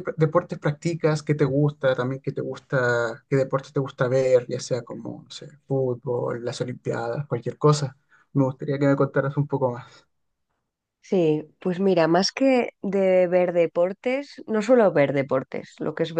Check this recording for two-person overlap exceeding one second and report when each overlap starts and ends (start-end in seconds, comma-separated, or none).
none